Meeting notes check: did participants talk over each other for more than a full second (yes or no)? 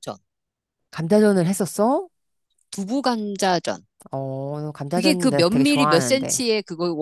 yes